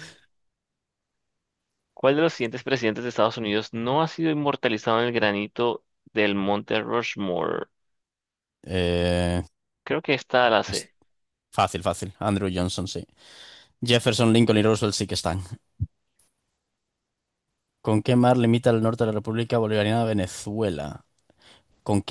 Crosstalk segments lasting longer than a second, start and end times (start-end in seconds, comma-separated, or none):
none